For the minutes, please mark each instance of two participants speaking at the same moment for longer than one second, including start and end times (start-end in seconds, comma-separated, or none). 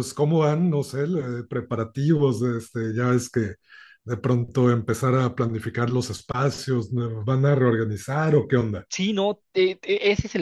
none